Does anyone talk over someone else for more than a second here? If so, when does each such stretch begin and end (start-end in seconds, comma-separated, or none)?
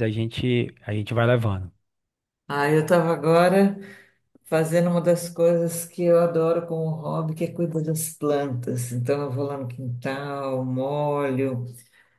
none